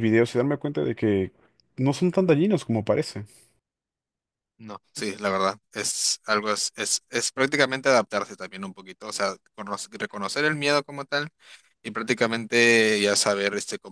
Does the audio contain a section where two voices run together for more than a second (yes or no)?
no